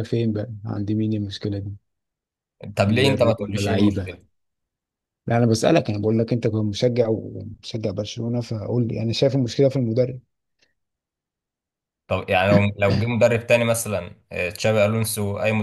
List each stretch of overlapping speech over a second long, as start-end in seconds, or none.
2.9-4.2